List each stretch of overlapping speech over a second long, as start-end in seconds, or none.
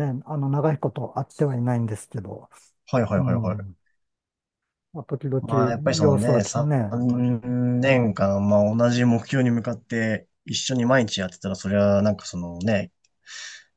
5.4-7.0